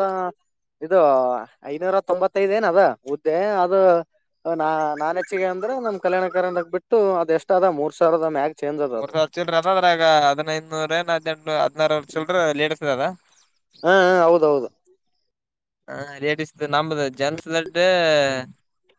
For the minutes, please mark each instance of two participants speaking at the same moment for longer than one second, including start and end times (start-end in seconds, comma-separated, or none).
none